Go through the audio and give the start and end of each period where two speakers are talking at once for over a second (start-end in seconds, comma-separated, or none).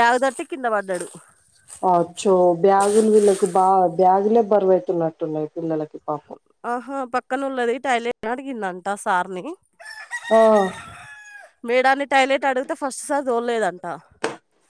none